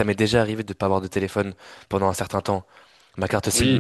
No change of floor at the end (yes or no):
no